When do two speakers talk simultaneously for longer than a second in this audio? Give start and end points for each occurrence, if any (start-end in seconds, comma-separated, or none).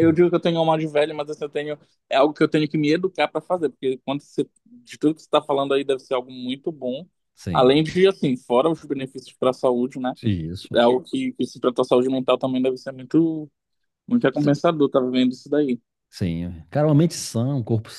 none